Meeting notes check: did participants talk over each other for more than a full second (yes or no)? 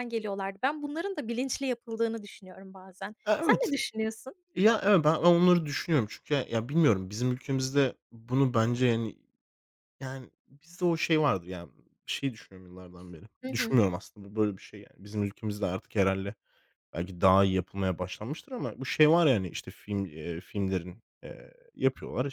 no